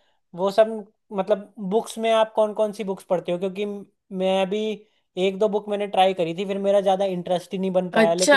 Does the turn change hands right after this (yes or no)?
yes